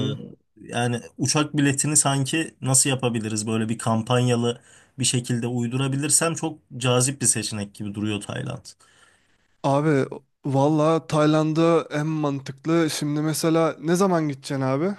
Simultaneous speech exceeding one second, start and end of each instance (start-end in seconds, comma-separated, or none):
none